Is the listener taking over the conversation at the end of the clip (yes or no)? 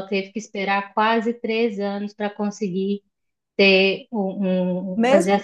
yes